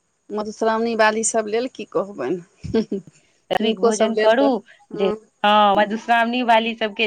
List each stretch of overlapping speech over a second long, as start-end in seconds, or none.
none